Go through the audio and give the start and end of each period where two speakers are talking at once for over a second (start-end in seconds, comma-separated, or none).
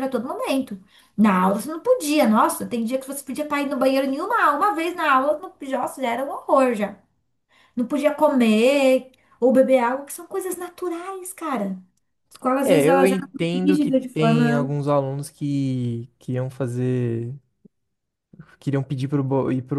12.6-14.7